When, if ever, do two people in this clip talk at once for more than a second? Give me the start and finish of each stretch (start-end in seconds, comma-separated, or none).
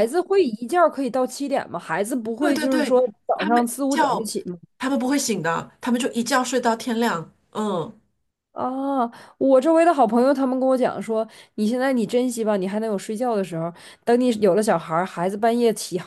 2.4-4.3